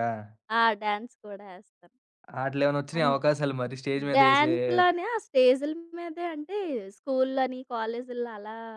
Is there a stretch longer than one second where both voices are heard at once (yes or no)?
no